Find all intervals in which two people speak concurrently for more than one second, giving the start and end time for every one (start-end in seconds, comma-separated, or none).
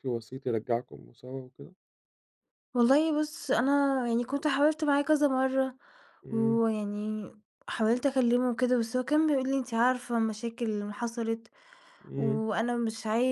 none